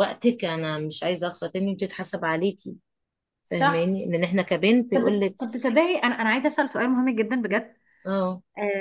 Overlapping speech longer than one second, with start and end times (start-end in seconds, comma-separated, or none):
none